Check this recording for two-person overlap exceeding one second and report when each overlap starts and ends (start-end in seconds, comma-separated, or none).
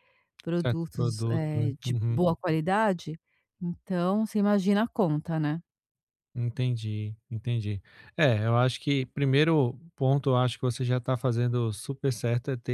0.6-2.2